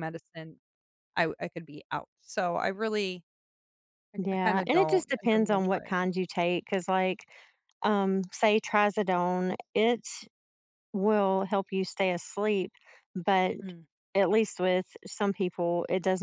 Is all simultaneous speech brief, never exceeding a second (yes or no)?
no